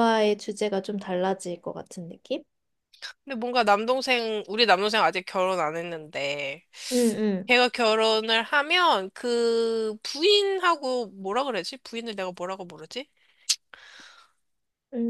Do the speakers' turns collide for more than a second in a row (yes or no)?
no